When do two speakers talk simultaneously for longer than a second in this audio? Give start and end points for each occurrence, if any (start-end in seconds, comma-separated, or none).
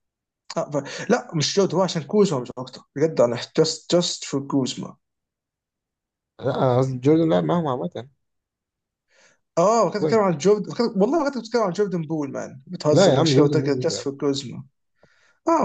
12.9-14.1